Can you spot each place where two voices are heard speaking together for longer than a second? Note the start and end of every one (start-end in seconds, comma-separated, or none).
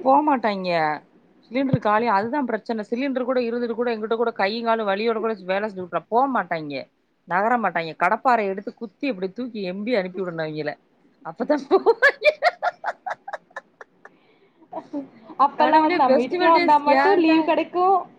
15.6-17.4